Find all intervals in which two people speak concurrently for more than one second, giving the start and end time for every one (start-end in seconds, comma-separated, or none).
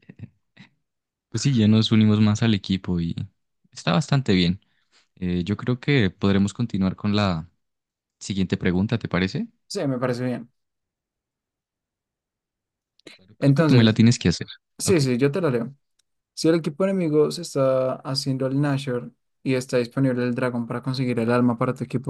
none